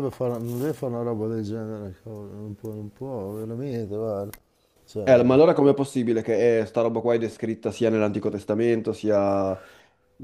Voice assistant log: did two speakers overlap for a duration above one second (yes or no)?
no